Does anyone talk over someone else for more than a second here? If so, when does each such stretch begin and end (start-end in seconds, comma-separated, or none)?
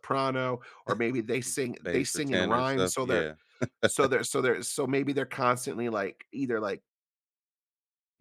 1.4-3.2